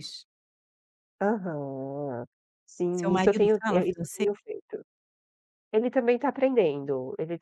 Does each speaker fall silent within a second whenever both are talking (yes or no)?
no